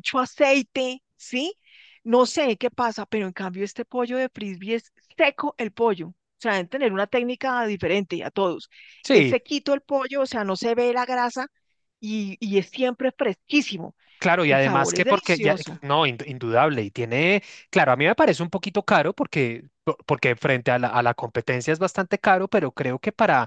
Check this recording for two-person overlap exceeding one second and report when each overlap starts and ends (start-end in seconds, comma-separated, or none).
14.5-15.8